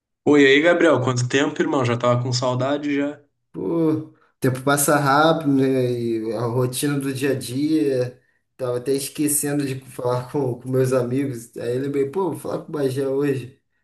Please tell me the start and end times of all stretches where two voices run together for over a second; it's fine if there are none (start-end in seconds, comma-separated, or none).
none